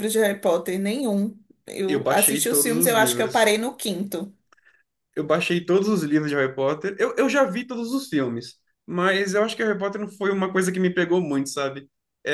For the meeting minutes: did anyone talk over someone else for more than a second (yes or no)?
yes